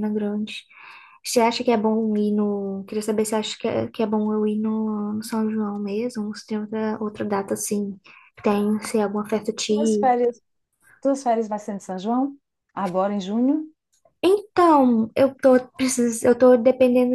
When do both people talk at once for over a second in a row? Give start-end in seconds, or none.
none